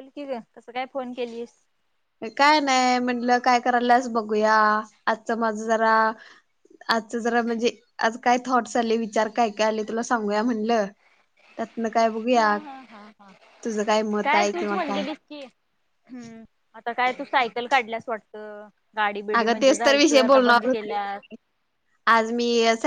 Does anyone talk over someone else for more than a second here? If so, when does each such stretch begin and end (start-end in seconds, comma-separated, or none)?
19.4-20.9